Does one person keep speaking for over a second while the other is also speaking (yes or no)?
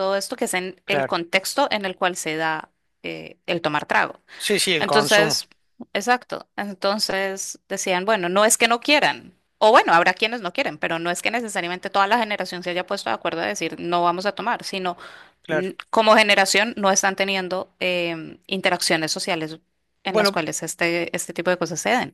no